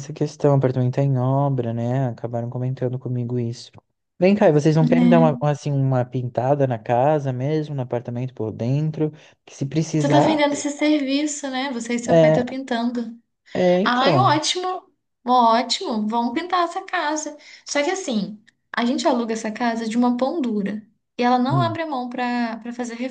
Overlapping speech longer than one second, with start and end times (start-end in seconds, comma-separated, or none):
none